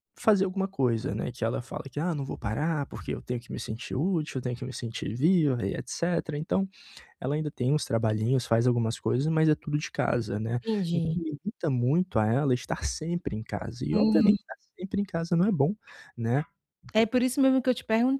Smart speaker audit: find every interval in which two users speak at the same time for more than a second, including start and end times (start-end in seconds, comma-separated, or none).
none